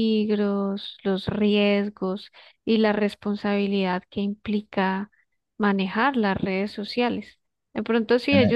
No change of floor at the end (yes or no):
yes